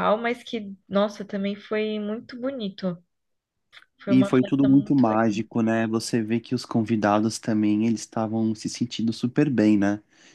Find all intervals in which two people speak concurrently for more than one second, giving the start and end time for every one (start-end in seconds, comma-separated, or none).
4.1-5.4